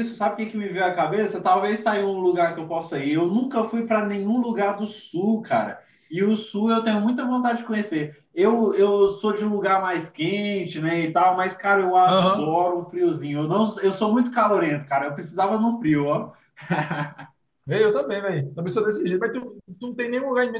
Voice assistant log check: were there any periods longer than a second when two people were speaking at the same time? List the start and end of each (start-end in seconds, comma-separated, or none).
none